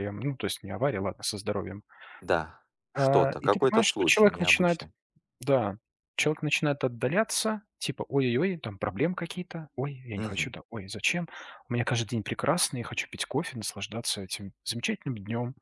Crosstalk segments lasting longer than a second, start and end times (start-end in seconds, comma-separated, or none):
2.9-4.8